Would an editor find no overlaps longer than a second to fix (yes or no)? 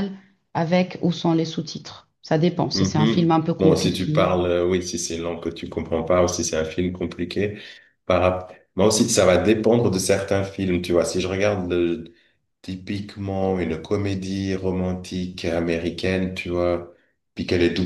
no